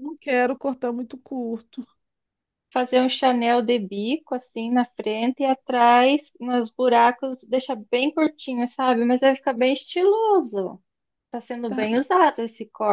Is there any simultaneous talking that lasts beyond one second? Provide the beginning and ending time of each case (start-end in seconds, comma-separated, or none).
none